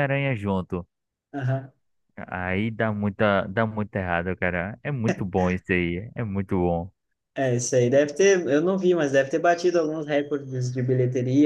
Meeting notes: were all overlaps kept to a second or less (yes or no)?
yes